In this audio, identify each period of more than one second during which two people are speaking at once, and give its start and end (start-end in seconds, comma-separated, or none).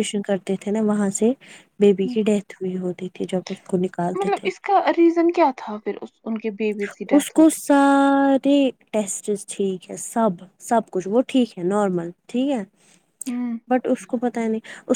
none